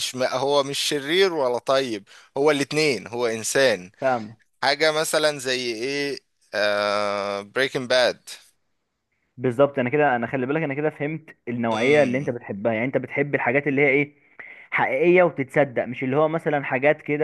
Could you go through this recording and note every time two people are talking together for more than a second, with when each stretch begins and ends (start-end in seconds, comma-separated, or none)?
none